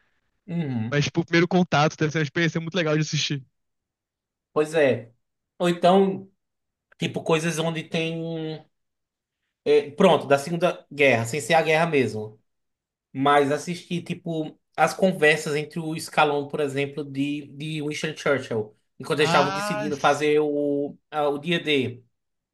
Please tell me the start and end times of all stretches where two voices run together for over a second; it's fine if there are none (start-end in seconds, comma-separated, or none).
19.2-20.4